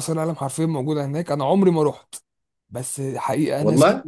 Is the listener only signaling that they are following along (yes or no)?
yes